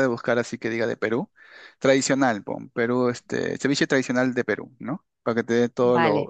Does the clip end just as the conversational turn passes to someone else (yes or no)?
yes